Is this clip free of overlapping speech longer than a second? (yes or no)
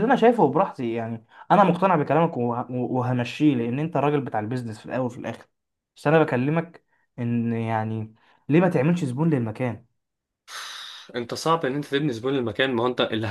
yes